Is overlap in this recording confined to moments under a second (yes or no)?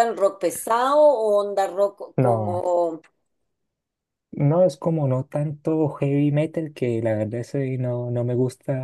yes